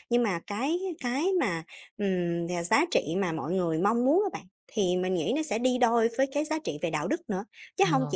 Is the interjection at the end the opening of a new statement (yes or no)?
no